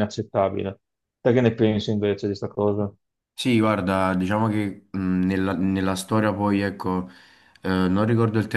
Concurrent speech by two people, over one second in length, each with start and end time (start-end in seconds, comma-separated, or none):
none